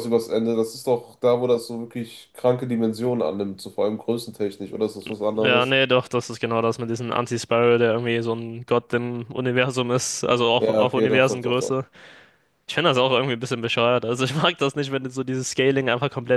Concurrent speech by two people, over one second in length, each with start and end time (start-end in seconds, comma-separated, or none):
10.6-11.8